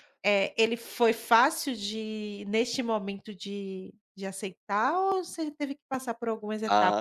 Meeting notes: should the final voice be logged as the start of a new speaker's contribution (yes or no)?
yes